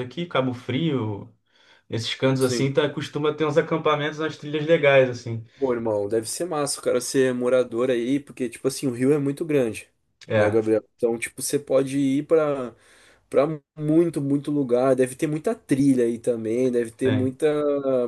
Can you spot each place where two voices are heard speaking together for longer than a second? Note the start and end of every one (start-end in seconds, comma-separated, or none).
none